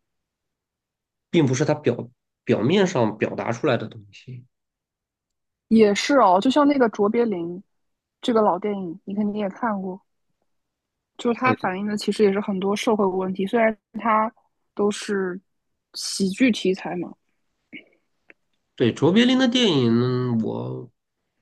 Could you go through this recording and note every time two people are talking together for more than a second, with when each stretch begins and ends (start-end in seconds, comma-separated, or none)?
none